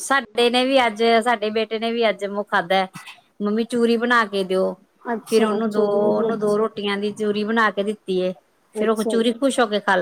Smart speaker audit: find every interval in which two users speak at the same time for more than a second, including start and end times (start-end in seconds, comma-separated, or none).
5.3-6.6